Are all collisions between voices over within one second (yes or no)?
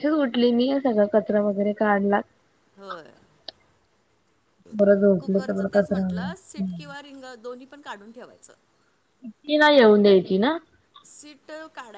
no